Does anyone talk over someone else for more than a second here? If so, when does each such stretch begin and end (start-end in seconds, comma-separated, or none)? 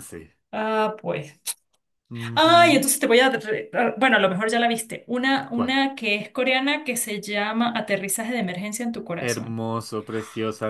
none